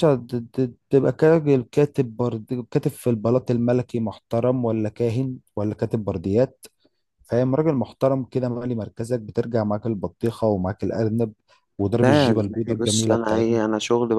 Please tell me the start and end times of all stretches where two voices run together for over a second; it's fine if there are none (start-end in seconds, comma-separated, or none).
12.0-13.6